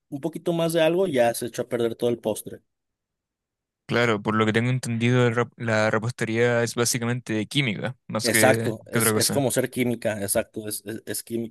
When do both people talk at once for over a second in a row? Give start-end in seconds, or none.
8.2-9.4